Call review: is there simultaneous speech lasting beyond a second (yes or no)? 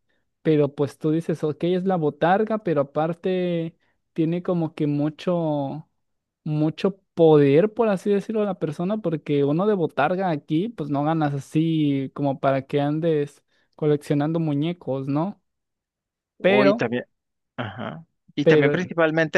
no